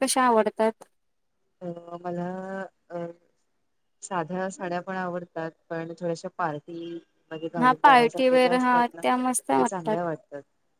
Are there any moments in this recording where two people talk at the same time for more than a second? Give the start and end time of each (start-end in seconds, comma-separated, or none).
7.6-9.5